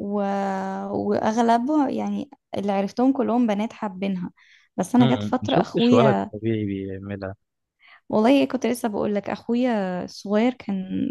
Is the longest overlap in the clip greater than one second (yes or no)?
yes